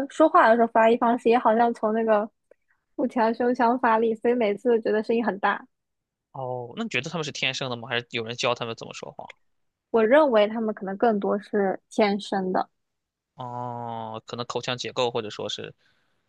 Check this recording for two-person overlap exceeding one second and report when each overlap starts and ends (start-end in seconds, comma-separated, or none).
none